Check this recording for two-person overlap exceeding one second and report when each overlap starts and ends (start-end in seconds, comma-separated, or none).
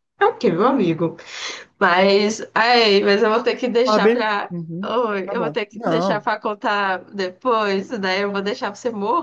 3.8-6.3